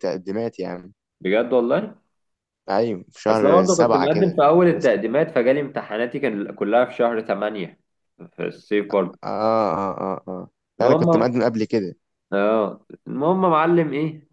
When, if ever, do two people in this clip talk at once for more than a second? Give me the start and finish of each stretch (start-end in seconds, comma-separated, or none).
3.3-5.0